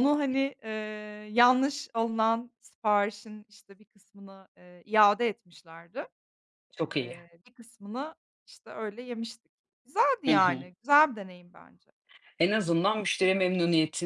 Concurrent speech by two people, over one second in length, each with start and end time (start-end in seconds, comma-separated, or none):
none